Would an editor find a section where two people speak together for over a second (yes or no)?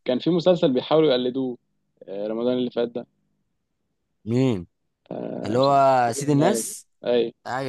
yes